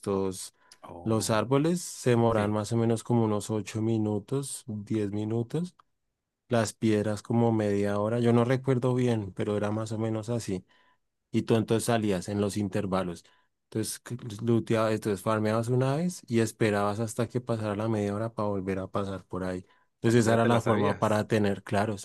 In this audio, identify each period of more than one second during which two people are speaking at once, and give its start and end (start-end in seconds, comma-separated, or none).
20.1-21.3